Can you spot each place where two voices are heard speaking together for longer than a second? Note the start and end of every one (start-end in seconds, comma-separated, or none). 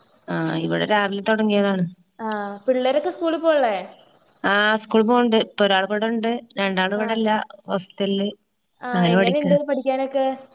none